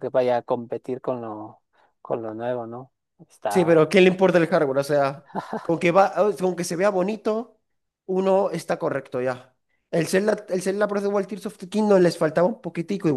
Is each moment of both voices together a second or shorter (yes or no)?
yes